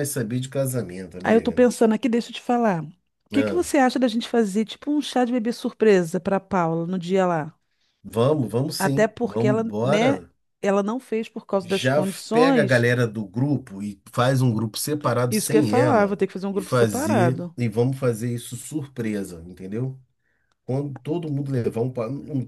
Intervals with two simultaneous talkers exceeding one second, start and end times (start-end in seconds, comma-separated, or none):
8.8-10.2, 11.6-12.9, 15.3-17.6